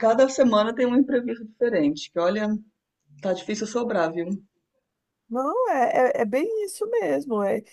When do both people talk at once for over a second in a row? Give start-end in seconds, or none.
none